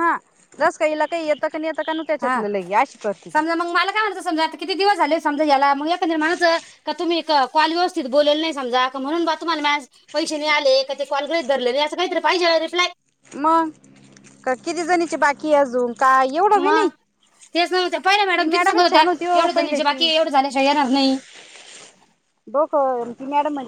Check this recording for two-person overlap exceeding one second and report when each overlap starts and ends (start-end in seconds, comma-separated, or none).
18.2-20.1